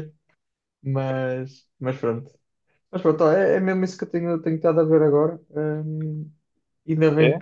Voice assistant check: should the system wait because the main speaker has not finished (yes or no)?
yes